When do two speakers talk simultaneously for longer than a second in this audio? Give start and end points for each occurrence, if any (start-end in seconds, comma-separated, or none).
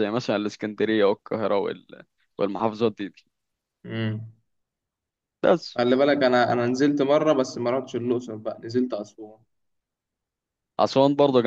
none